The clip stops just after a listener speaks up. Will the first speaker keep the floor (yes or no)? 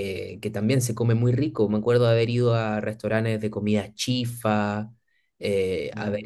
yes